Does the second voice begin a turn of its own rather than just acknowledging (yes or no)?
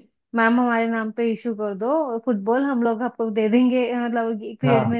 no